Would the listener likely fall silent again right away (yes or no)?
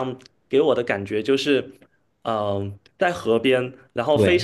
yes